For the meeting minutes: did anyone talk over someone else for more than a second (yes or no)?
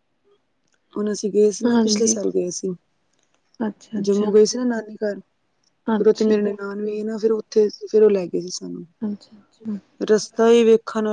no